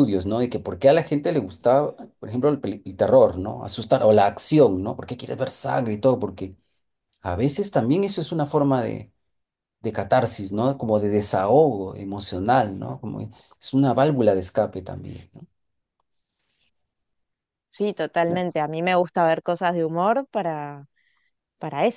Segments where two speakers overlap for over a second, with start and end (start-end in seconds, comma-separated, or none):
none